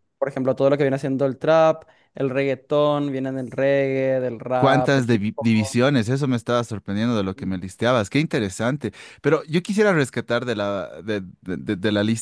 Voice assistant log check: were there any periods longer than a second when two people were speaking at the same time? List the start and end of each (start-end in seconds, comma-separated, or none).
4.5-5.8